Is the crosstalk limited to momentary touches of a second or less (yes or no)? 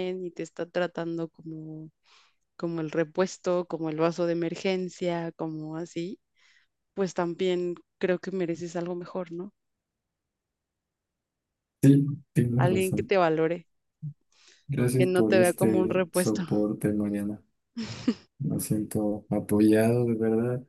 no